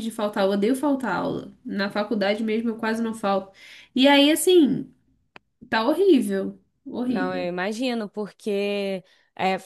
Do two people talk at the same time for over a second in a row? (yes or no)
no